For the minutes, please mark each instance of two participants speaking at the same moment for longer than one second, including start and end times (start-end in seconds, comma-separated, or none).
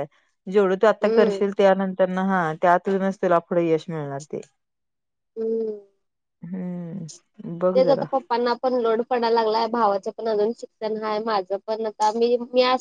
none